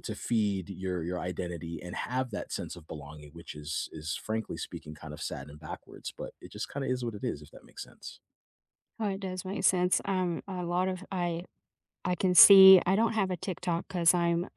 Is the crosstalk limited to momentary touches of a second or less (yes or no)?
yes